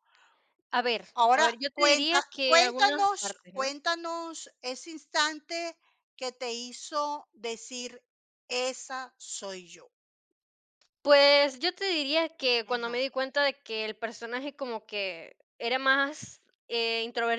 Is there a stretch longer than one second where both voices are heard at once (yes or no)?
yes